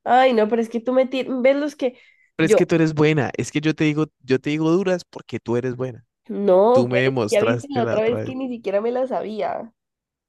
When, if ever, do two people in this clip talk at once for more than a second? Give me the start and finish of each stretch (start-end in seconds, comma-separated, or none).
6.7-8.4